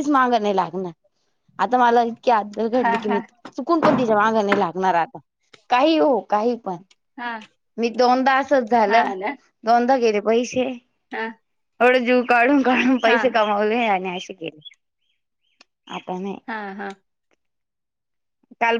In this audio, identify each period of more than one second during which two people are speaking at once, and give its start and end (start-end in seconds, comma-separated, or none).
none